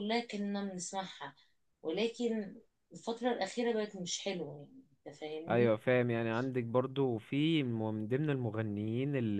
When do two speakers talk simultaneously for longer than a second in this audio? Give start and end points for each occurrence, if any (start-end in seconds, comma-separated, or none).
none